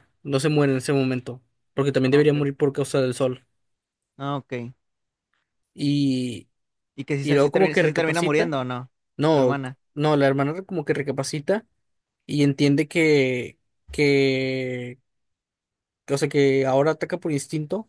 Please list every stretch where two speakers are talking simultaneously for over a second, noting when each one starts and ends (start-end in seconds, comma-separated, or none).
7.2-8.5